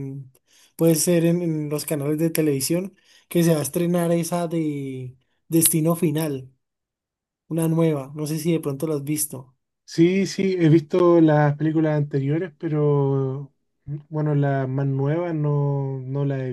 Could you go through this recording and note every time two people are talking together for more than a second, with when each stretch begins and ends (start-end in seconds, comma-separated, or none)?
none